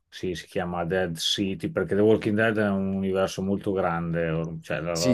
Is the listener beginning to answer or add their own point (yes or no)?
yes